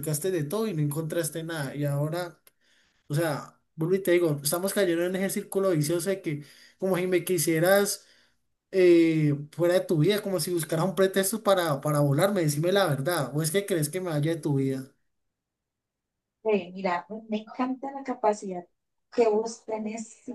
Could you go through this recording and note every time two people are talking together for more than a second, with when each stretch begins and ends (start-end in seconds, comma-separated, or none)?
none